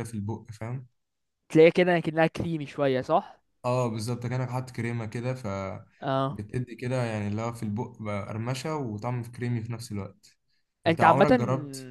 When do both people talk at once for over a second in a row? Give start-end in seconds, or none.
none